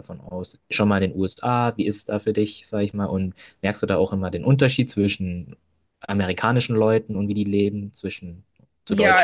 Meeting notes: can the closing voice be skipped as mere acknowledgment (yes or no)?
no